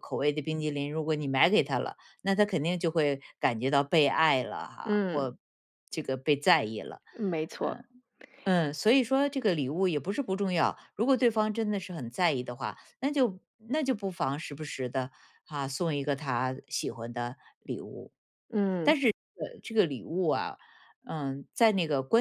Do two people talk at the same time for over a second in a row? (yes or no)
no